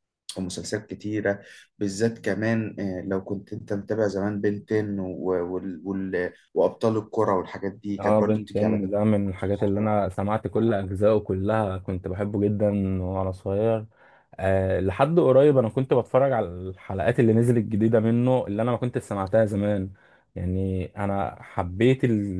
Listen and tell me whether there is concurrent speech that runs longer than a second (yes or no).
yes